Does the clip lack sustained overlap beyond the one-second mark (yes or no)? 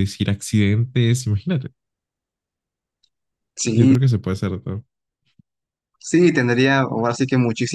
yes